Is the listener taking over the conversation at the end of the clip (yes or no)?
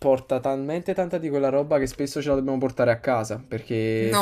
no